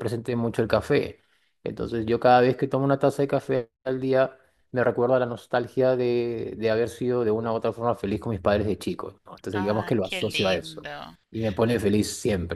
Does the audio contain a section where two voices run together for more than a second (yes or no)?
yes